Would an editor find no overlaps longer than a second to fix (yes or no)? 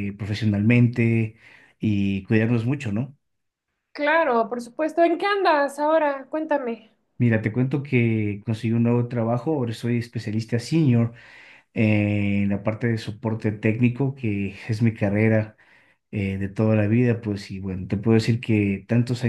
yes